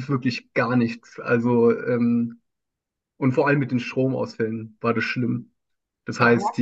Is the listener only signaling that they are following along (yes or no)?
yes